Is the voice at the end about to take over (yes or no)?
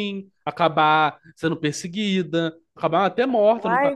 yes